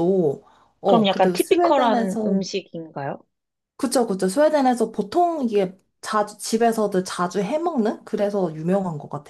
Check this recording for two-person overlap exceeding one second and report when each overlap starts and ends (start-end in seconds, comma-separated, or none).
0.8-2.4